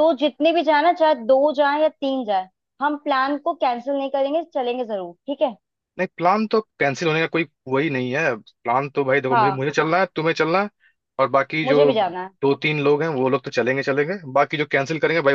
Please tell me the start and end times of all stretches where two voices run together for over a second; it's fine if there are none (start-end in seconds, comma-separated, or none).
none